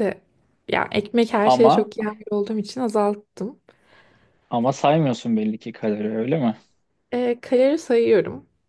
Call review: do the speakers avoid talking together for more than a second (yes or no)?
yes